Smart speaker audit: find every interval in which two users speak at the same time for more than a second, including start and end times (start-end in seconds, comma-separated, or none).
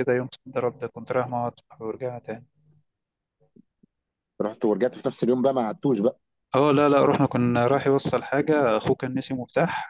none